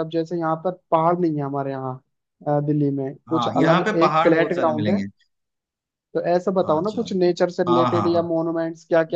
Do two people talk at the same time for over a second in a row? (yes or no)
yes